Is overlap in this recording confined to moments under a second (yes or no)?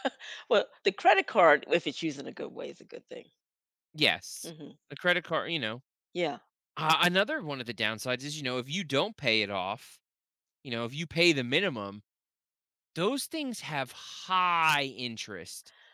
yes